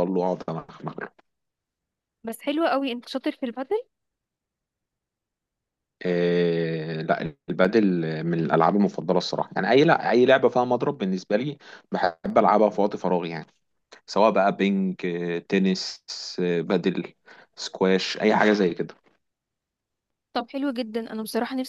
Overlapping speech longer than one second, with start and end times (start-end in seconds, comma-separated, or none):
none